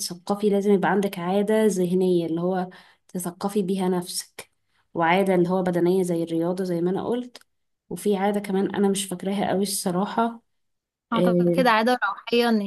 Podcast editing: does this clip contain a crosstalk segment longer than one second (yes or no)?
no